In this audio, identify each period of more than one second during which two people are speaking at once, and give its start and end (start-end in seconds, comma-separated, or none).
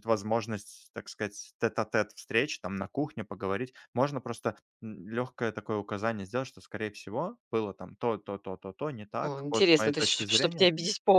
9.2-10.7